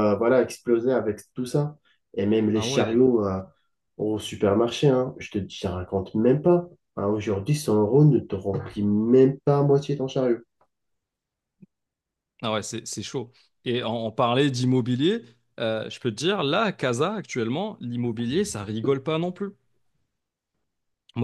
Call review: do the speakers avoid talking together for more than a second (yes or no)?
yes